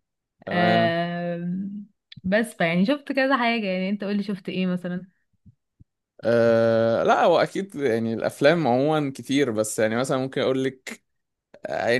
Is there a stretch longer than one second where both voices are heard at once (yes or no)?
no